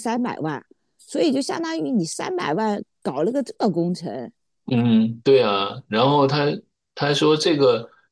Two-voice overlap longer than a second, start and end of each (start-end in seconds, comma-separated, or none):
none